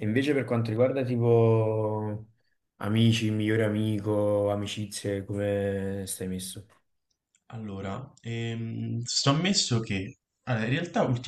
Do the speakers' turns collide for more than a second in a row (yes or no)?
no